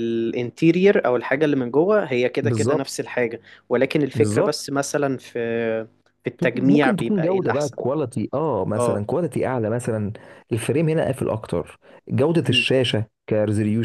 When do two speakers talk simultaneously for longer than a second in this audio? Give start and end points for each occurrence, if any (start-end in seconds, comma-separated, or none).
6.5-7.8